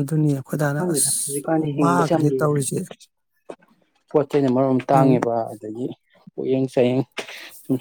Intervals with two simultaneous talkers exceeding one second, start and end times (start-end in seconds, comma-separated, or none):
0.8-2.5